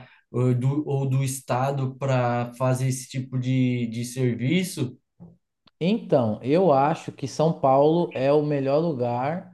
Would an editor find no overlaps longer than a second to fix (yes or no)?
yes